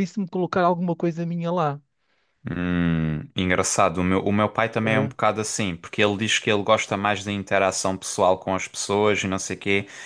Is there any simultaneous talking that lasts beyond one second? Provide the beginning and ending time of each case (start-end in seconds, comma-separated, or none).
none